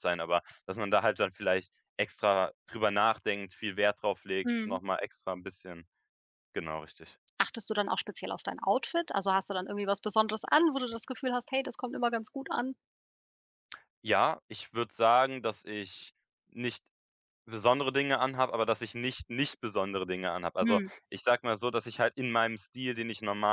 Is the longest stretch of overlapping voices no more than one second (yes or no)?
yes